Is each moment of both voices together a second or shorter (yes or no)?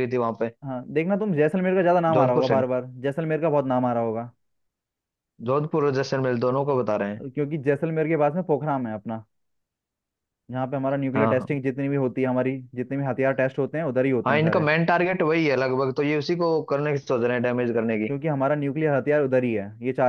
yes